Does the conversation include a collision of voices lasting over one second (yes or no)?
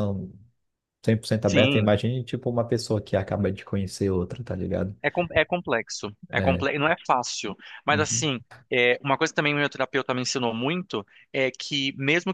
no